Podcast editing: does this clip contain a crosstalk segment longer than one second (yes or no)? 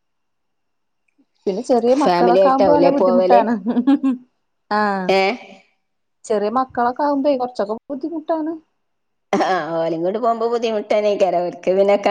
yes